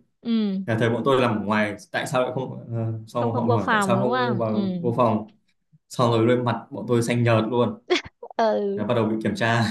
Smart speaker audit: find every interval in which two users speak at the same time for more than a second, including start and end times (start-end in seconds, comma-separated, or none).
3.2-4.6